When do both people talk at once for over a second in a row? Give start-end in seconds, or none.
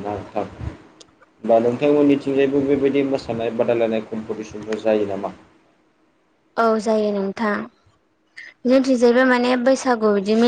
none